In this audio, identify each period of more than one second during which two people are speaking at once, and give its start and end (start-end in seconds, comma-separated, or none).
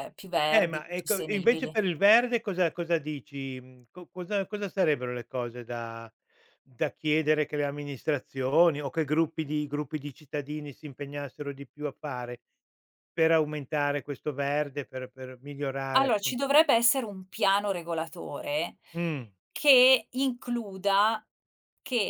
0.5-1.7